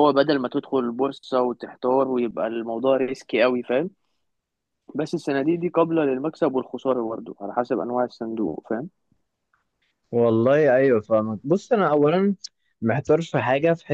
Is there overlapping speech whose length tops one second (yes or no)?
no